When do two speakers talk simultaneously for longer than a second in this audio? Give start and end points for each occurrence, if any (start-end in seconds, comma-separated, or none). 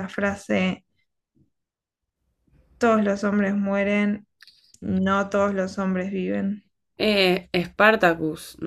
none